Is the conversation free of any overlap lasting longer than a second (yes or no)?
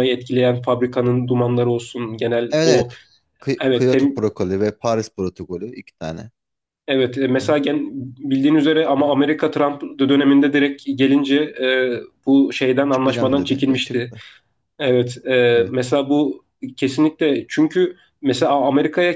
no